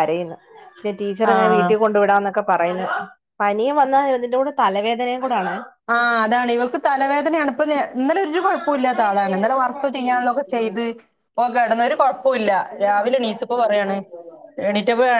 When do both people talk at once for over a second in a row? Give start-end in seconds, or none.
none